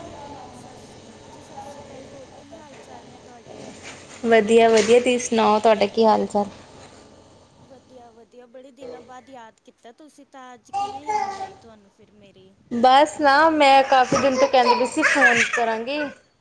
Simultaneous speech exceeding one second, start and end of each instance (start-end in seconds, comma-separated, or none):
none